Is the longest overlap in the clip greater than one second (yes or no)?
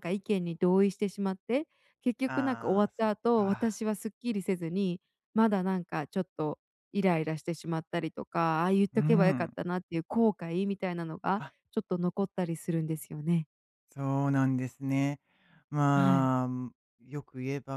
yes